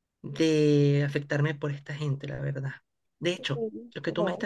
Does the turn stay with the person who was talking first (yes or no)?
yes